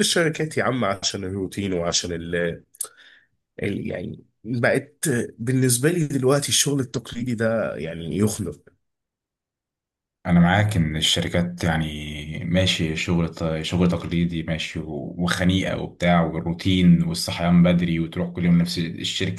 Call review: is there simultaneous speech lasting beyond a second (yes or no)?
no